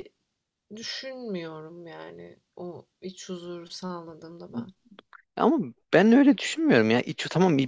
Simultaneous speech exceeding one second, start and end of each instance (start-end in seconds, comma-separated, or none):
none